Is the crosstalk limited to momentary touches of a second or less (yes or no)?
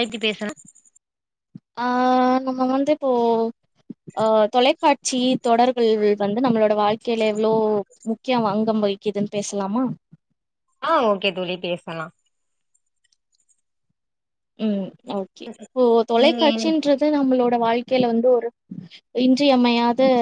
yes